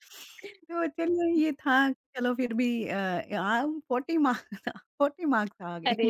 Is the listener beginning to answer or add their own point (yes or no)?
yes